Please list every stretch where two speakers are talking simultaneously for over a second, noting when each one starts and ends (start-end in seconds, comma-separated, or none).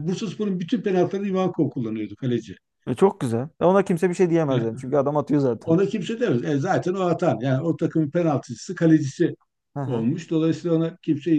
none